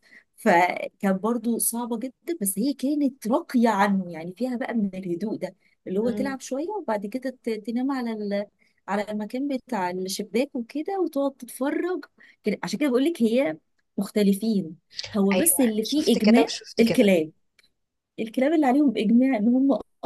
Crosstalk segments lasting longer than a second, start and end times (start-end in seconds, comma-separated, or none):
15.3-17.1